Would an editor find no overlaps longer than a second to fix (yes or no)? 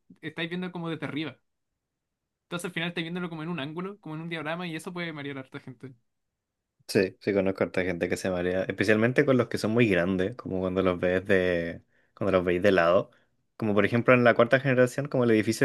yes